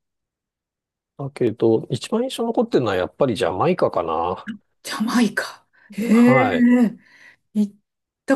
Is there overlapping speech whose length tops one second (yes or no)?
no